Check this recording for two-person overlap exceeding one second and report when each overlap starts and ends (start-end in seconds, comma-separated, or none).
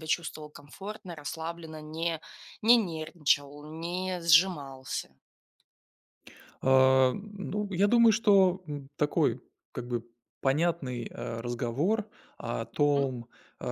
none